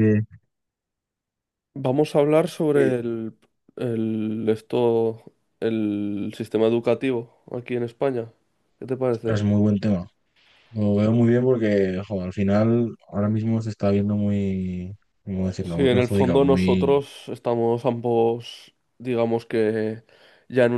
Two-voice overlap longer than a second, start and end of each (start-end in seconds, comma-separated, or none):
15.6-17.0